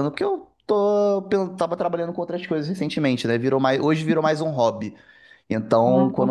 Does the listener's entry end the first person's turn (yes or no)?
no